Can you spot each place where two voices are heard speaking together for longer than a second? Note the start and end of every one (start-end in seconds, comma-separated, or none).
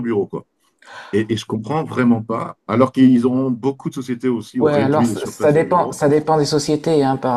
4.6-6.0